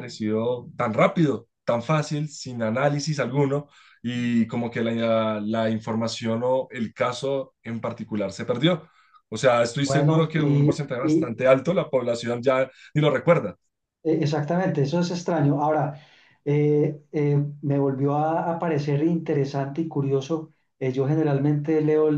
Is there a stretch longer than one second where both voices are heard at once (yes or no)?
yes